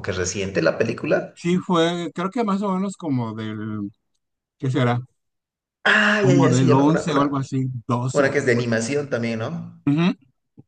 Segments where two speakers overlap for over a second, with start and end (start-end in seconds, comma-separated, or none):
6.2-7.5